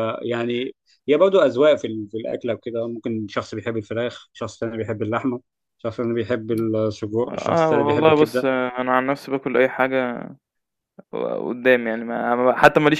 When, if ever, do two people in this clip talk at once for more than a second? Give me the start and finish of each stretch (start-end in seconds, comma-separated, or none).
7.3-8.5